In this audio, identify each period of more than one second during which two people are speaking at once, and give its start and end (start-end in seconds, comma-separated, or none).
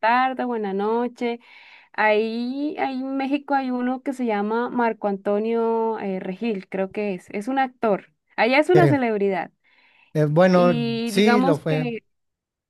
10.5-11.9